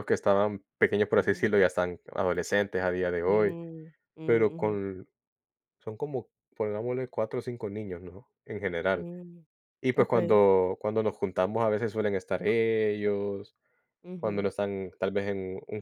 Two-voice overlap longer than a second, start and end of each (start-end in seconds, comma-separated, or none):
none